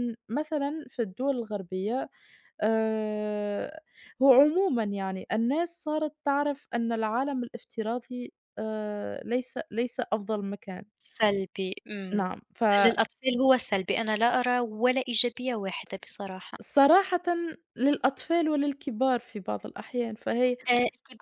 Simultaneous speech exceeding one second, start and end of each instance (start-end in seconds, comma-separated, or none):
none